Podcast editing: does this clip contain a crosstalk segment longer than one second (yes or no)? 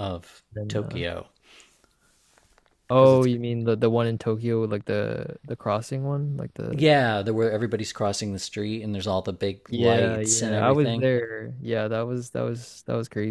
yes